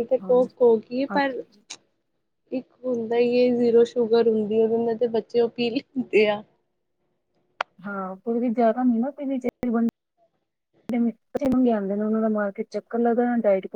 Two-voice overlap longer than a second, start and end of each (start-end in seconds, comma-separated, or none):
none